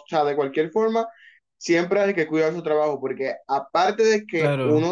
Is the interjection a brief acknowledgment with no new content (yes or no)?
yes